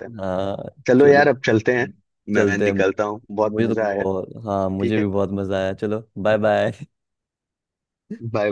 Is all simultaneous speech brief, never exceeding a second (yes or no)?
yes